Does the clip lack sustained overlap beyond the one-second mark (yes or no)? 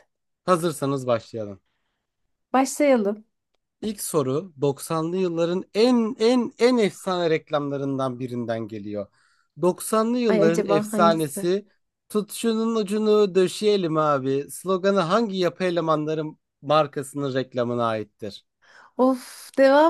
no